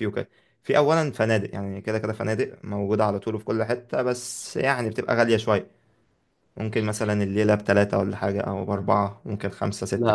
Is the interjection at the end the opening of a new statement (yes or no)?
yes